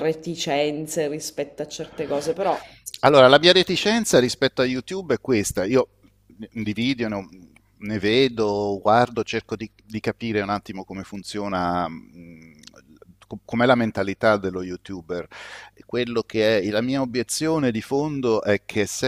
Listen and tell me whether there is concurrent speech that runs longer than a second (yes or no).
no